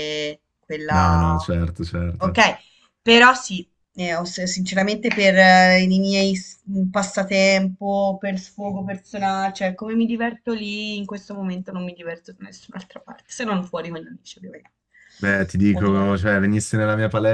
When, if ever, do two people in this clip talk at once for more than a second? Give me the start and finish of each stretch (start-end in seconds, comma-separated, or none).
none